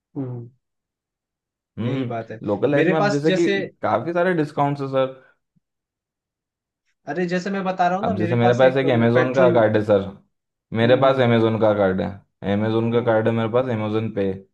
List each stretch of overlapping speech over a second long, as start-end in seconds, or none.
1.8-3.6, 8.0-9.6